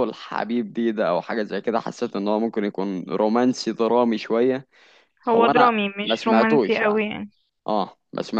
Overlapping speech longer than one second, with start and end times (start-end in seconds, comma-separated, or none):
5.3-7.1